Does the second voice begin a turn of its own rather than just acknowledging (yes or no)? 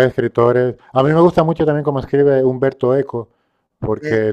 no